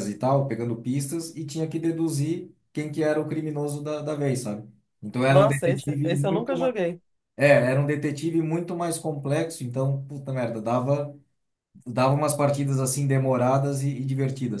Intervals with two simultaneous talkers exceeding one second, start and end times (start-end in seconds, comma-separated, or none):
5.3-6.7